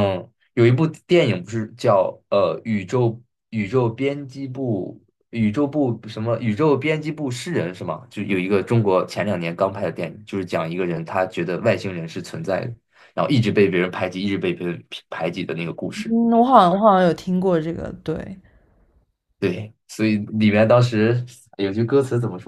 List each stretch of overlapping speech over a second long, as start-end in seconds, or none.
none